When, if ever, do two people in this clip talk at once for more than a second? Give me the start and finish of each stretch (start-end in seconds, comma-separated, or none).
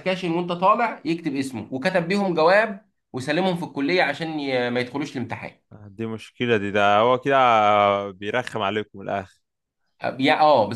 none